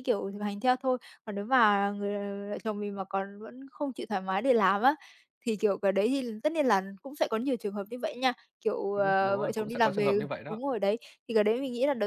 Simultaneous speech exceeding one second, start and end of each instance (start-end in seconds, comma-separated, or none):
8.9-10.6